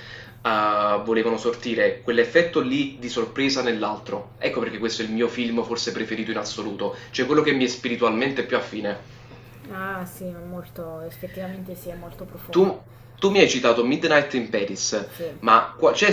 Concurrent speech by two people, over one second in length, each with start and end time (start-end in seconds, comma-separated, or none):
none